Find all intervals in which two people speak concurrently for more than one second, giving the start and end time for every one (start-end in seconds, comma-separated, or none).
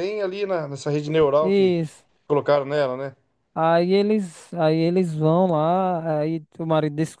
none